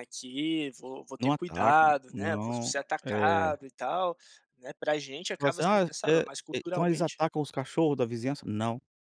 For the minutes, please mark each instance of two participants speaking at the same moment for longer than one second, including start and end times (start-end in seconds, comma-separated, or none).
1.2-3.5, 5.3-7.2